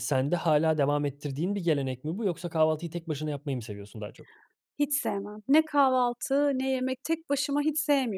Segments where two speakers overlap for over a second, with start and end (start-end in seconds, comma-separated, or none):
none